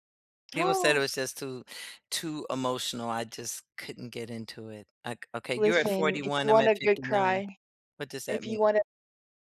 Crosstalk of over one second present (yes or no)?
yes